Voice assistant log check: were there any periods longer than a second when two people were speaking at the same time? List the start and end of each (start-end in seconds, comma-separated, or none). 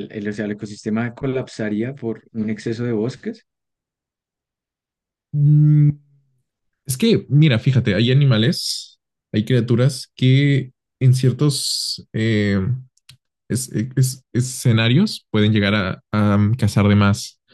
none